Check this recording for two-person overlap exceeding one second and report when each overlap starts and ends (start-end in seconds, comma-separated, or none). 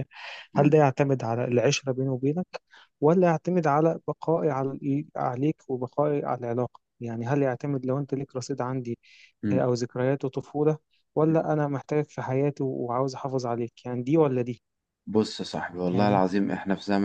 none